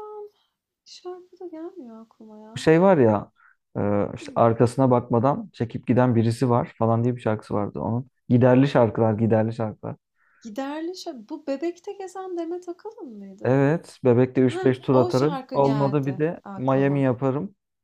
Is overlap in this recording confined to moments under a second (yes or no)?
no